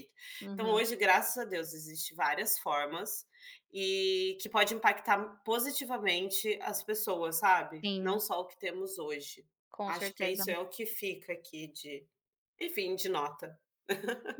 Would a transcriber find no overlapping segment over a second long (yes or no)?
yes